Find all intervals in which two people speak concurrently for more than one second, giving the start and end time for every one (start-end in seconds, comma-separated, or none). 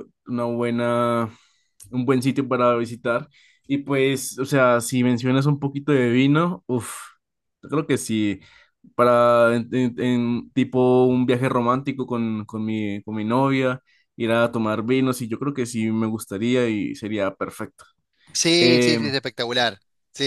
none